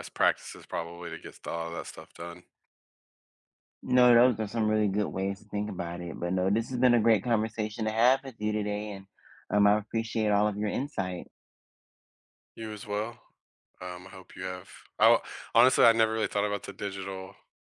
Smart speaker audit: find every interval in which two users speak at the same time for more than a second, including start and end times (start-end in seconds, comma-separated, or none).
none